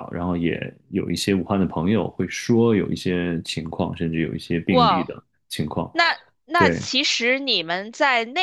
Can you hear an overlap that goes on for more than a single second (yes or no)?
no